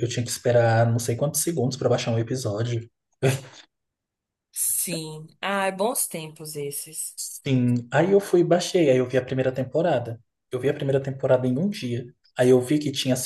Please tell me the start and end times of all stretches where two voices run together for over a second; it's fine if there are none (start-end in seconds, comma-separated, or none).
none